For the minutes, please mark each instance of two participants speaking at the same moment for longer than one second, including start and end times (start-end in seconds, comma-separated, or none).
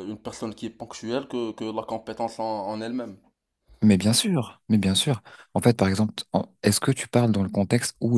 none